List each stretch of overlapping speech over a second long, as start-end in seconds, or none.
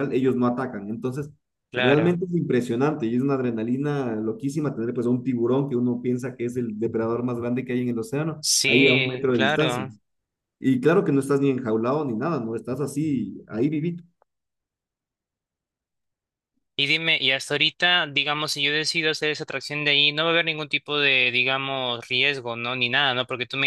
8.4-9.8